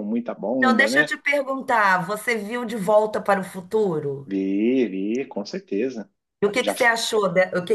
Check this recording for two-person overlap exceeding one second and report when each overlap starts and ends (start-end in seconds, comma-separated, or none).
none